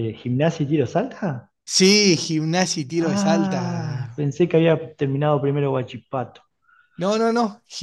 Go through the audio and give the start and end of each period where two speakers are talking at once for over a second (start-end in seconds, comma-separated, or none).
3.0-4.3